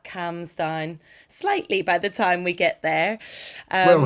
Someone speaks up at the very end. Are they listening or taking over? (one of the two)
taking over